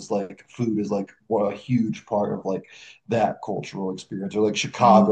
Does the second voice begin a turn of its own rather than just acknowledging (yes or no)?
yes